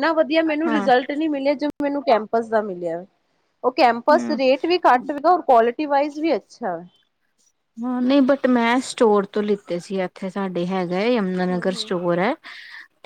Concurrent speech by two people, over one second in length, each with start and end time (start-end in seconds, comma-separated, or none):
none